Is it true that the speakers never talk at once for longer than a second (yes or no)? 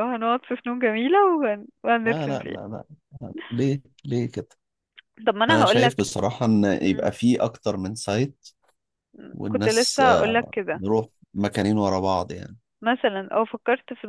no